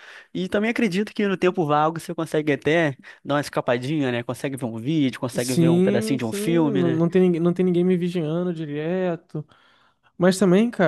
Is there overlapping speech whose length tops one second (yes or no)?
yes